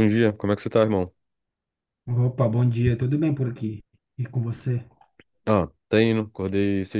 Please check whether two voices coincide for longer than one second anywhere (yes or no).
no